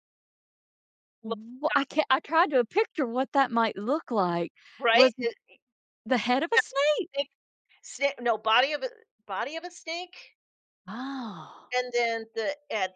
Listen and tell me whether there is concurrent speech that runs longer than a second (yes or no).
no